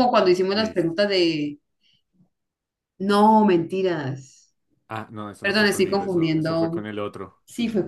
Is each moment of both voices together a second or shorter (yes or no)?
no